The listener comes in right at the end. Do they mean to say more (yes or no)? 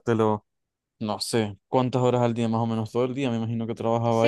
yes